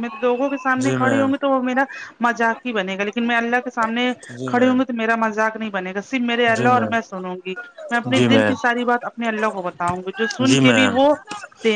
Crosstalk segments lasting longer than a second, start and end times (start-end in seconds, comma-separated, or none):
none